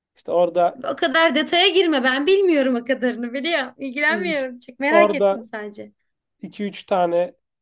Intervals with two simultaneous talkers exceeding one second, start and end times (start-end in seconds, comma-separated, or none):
none